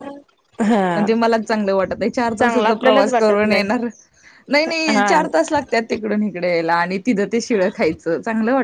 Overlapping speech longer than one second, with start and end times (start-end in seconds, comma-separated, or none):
2.4-3.7